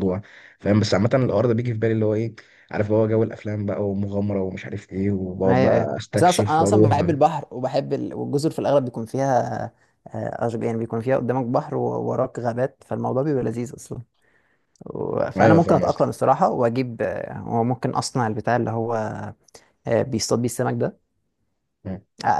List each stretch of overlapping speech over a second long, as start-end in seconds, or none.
5.5-7.1